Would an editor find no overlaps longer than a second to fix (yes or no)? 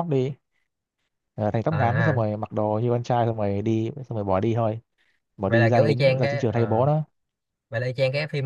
no